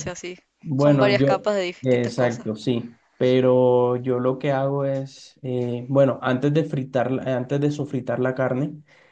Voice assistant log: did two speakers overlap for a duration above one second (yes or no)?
yes